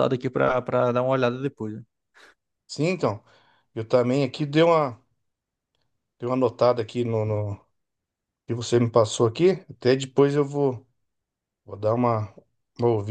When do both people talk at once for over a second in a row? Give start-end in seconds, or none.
none